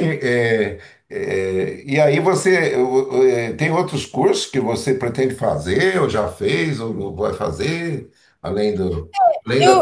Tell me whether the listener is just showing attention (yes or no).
no